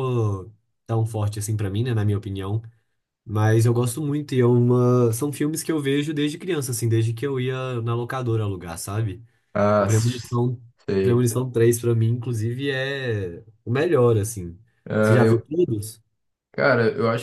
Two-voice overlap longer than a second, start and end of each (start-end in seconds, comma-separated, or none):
none